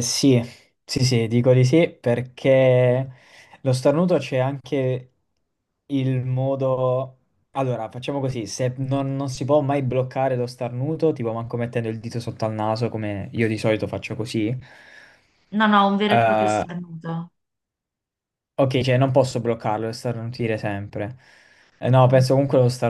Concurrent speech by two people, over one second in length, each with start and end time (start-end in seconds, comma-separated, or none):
none